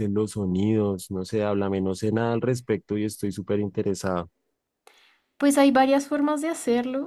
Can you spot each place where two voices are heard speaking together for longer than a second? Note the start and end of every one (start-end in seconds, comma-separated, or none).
none